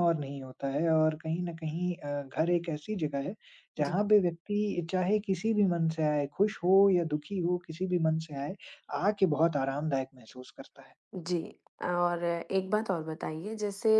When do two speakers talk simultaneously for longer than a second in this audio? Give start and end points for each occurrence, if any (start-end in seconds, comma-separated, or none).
none